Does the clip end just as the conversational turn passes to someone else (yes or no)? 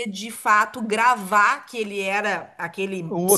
yes